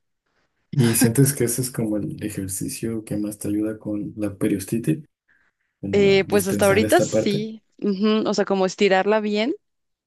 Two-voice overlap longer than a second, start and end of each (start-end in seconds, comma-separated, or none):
5.9-7.5